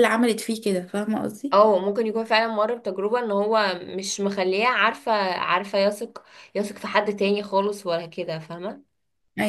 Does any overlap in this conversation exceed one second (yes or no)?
no